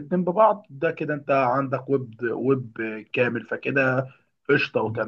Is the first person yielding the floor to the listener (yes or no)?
yes